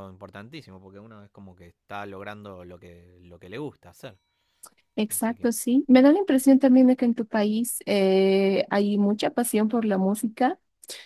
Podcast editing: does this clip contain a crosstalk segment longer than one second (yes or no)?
no